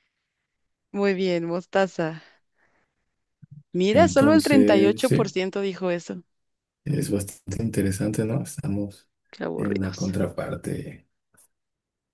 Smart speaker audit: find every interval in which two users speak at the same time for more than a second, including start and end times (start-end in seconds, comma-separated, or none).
3.9-5.3